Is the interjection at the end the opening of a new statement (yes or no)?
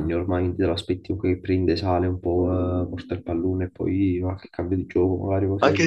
yes